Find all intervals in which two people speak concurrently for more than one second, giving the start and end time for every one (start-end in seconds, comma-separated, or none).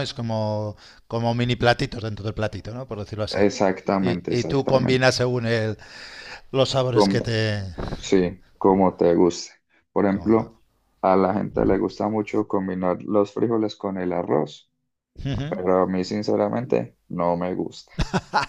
4.0-5.2